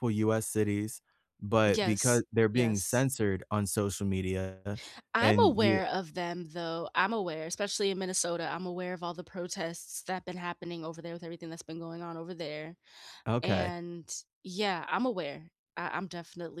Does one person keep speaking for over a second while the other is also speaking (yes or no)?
yes